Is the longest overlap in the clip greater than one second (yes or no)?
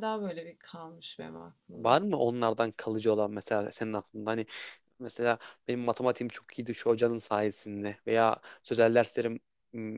no